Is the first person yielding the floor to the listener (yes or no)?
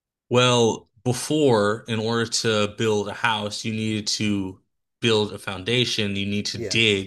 no